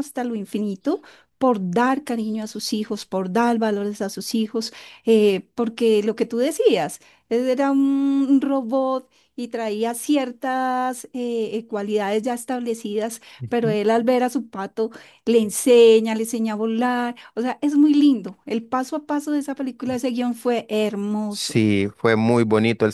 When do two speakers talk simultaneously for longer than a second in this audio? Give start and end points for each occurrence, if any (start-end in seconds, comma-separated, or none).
none